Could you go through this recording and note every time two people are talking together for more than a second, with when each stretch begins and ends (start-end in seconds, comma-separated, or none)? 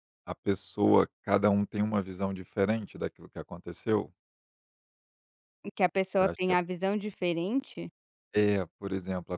none